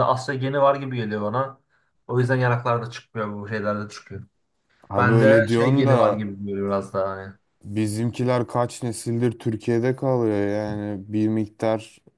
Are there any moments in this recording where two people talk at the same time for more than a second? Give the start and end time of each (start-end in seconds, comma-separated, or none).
5.0-6.2